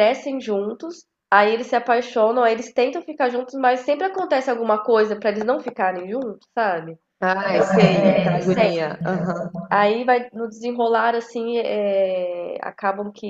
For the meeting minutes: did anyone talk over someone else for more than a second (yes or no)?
yes